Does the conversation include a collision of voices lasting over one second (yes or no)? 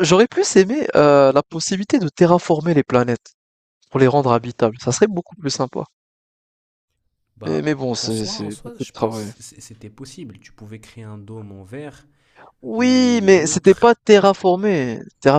yes